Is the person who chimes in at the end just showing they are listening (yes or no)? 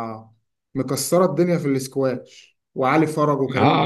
no